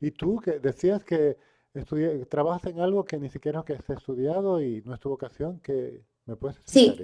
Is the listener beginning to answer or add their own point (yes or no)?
yes